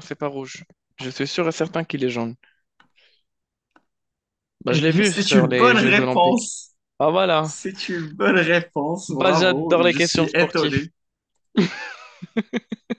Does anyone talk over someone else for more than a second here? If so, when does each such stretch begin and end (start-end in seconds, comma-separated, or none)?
4.7-6.5, 9.1-10.8